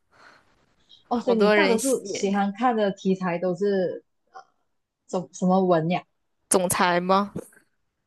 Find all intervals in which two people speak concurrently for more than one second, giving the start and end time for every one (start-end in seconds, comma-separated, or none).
1.1-2.4